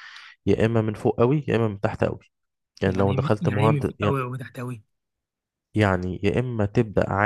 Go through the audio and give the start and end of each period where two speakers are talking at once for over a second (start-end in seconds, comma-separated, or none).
2.8-4.2